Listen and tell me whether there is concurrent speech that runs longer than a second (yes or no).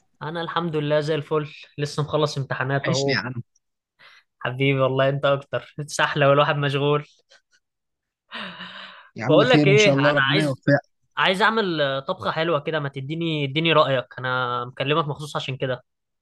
yes